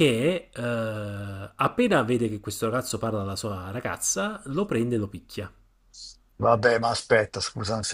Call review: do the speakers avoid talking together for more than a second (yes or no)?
yes